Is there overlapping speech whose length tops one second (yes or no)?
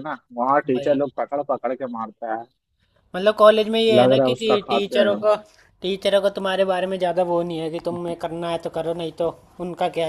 yes